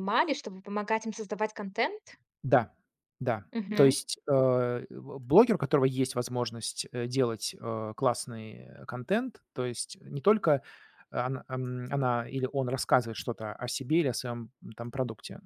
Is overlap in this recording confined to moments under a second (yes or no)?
yes